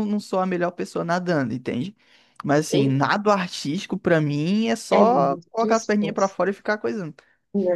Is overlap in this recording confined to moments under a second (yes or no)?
no